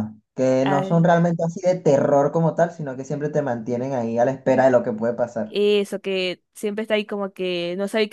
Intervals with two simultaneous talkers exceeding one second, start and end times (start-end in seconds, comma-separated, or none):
none